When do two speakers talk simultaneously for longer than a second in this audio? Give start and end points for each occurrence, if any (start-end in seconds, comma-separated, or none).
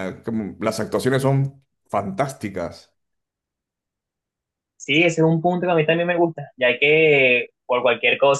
none